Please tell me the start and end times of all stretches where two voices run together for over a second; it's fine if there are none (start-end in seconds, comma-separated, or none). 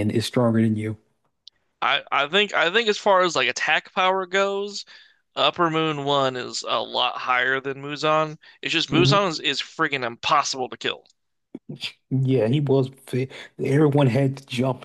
none